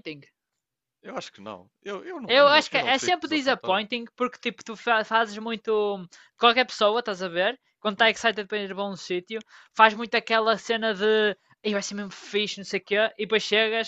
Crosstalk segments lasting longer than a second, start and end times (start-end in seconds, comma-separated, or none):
2.3-3.8